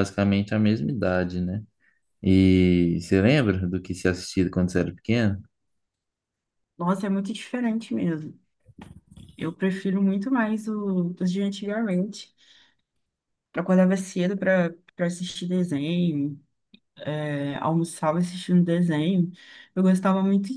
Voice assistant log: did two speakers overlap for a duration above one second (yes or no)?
no